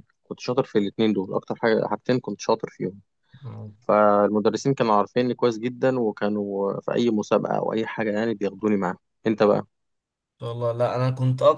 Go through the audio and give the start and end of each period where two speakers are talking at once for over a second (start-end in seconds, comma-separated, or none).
none